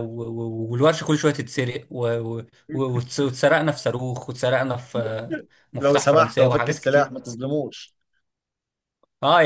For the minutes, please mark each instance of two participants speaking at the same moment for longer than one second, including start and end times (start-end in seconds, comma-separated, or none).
5.7-7.1